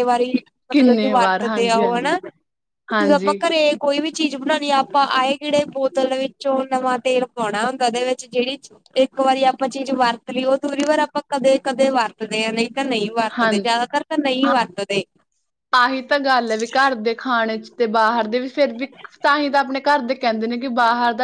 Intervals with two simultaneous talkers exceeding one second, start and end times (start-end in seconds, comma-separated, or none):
0.7-2.2